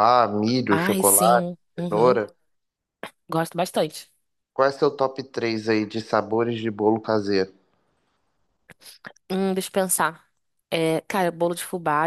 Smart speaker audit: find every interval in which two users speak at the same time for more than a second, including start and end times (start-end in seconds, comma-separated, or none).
0.7-2.2